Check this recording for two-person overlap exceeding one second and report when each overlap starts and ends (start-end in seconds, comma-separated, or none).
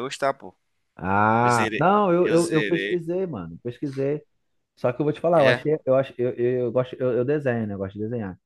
1.4-3.0